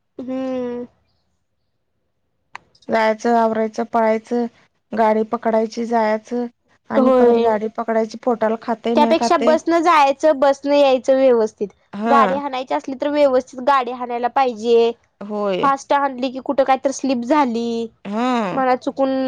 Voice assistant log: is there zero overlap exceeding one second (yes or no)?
yes